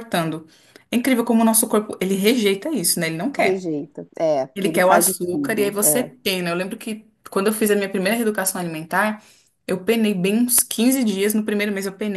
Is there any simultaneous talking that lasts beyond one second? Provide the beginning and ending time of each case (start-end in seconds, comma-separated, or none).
4.5-6.1